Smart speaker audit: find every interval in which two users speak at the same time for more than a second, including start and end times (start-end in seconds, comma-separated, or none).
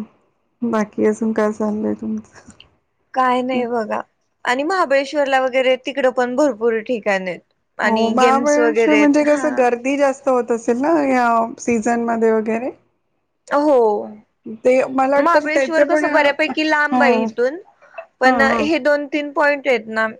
7.8-9.5, 15.2-17.3